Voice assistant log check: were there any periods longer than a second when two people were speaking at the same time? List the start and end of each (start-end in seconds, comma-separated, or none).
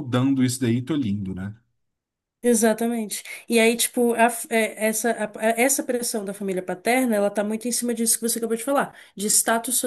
none